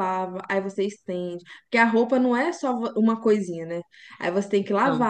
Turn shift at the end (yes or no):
no